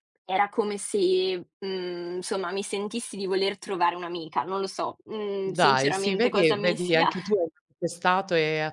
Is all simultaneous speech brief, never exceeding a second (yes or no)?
no